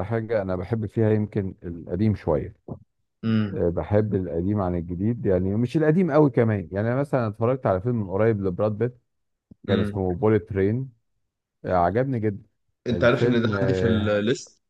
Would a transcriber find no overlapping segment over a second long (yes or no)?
no